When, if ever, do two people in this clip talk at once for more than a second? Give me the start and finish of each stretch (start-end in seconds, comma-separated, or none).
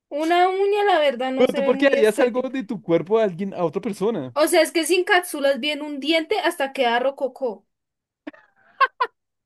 1.4-2.5